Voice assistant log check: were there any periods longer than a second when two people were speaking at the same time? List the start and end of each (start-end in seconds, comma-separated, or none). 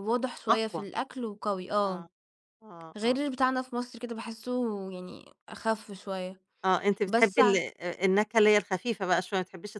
none